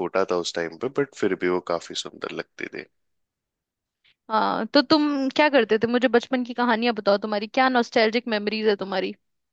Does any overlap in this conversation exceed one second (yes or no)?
no